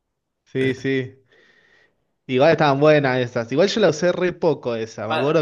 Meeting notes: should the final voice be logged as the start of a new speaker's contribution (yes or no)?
yes